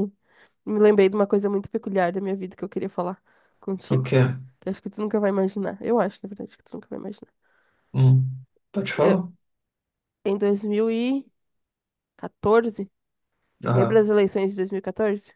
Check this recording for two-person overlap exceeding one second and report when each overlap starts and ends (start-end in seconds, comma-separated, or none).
none